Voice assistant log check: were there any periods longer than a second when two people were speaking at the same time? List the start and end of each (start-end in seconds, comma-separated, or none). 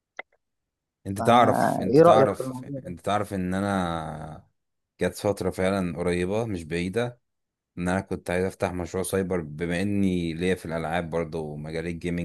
1.2-2.8